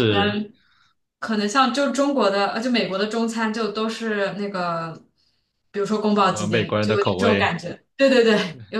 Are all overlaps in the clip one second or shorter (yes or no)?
no